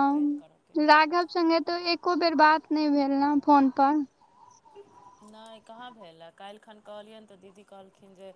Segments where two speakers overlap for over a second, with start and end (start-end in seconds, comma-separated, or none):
2.1-4.0